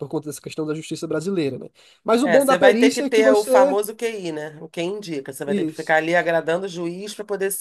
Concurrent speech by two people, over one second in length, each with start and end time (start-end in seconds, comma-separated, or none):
2.2-3.8